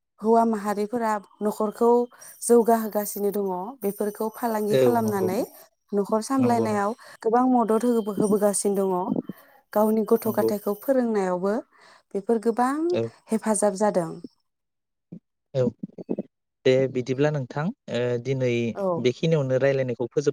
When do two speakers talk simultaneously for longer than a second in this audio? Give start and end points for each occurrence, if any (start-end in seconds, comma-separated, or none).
none